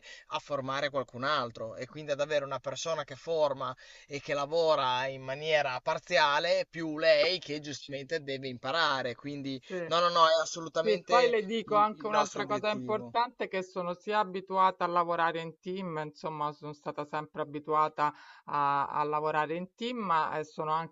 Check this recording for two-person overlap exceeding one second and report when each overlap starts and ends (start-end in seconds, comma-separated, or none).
10.8-13.1